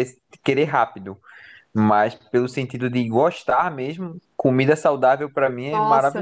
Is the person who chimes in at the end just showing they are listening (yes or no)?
no